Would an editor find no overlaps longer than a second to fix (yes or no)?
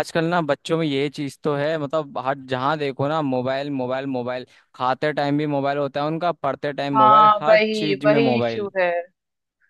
no